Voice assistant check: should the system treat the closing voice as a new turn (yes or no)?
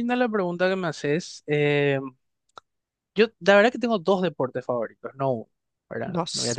no